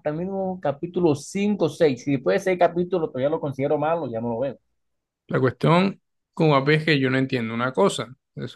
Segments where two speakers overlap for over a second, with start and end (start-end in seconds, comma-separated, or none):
none